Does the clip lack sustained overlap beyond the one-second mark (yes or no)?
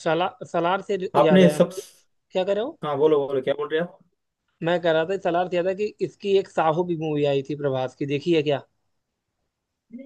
yes